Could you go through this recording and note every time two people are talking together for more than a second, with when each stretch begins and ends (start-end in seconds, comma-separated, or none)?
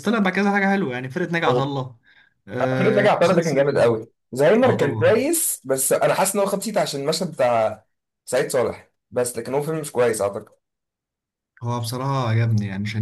2.8-4.0